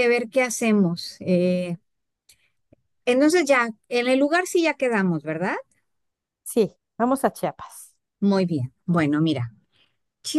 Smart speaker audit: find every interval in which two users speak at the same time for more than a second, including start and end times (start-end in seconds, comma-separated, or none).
none